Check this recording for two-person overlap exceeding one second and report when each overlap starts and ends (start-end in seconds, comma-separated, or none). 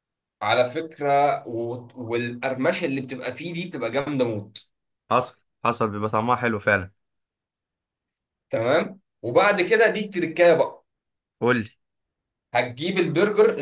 none